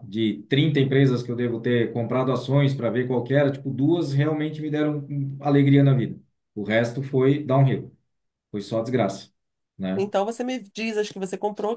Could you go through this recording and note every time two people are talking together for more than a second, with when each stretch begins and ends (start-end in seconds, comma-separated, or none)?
none